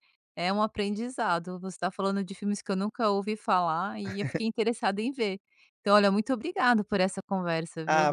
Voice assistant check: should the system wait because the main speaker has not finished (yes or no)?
no